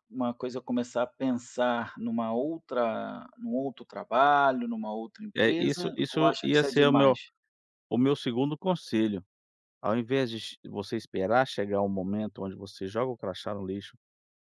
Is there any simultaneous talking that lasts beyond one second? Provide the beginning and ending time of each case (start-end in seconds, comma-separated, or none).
5.3-7.2